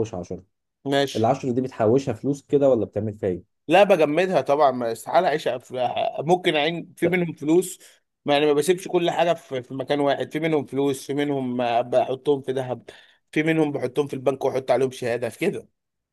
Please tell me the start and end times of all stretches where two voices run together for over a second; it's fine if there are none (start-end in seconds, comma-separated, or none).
none